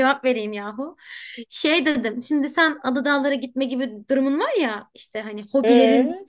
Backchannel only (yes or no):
yes